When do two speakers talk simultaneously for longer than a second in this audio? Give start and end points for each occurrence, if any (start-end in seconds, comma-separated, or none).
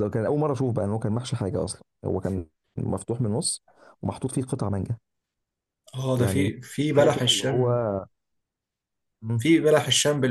6.2-7.7